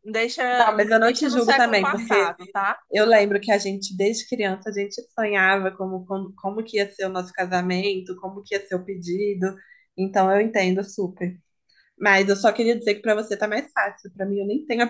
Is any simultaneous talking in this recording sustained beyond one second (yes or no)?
yes